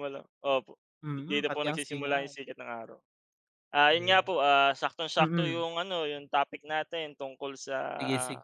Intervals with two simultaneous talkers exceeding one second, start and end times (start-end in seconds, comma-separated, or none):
1.0-2.4